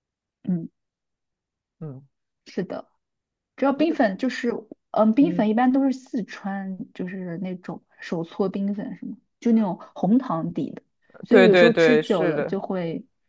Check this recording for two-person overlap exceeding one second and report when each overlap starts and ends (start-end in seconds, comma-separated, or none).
11.3-12.6